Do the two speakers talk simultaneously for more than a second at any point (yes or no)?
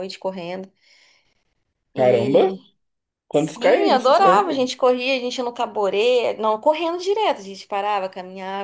yes